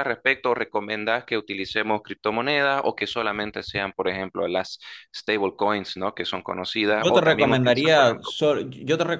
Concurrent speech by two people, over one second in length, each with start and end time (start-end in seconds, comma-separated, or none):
7.0-8.3